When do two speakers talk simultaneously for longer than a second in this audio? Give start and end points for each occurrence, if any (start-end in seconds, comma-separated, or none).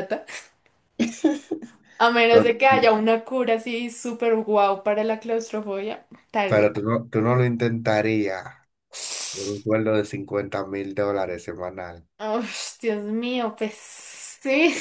none